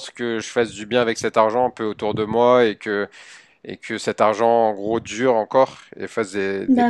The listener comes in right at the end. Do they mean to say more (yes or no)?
no